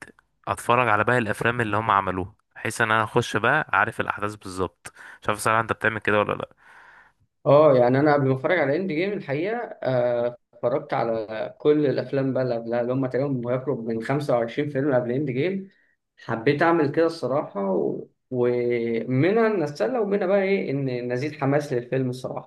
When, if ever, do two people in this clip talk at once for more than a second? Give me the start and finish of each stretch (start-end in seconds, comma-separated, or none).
none